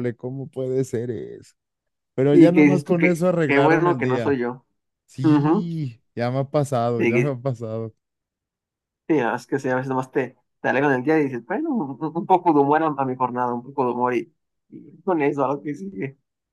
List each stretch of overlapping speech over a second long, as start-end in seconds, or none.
2.3-4.4